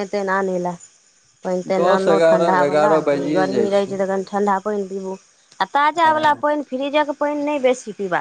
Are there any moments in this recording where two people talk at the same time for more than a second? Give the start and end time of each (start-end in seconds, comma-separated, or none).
1.8-3.7